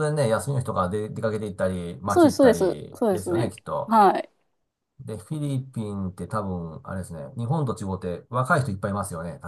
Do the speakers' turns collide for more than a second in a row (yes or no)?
yes